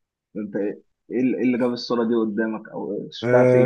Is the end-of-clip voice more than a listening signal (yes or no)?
yes